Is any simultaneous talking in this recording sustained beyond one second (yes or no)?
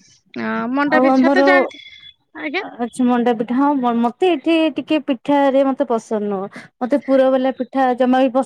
no